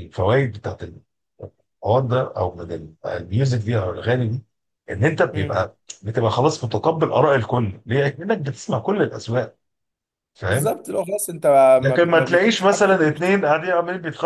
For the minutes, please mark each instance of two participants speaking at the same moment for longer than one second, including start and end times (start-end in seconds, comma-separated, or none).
11.8-13.2